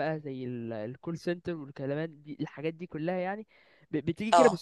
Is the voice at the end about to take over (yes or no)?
no